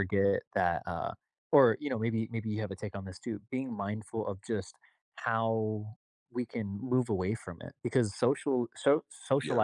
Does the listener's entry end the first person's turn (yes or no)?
no